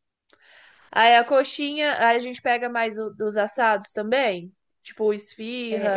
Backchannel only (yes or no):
no